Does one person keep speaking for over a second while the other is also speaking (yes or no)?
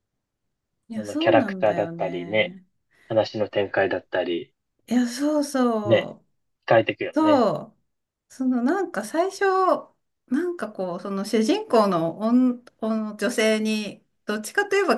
yes